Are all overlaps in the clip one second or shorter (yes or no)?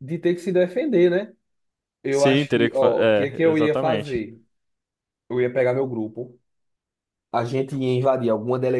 no